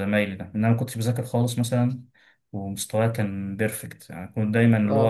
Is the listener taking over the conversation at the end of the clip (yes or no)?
no